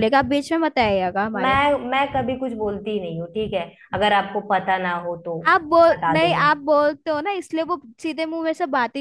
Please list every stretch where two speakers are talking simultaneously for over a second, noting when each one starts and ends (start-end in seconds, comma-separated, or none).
none